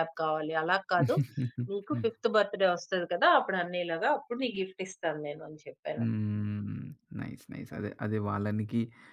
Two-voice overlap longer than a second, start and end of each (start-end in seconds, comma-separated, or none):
none